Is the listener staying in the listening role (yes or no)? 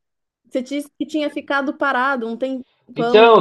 no